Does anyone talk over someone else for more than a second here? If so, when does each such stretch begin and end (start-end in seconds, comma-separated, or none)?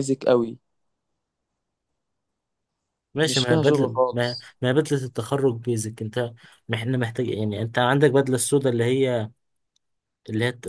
3.2-4.5